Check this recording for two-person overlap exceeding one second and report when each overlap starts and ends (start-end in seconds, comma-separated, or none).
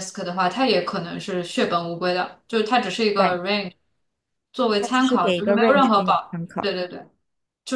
4.8-6.7